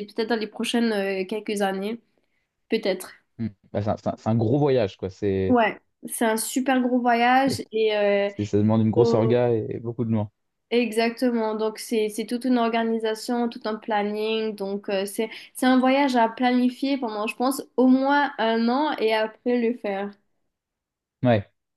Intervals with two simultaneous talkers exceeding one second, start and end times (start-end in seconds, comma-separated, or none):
none